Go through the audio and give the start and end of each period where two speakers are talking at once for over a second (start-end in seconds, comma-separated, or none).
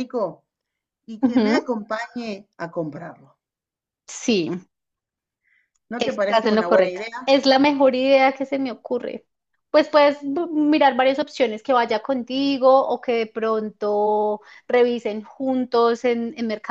6.0-7.3